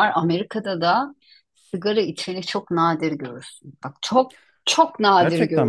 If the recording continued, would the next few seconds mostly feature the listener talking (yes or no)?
no